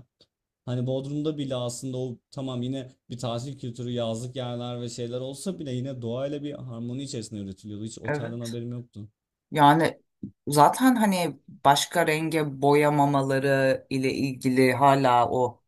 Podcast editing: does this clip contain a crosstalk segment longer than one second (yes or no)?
no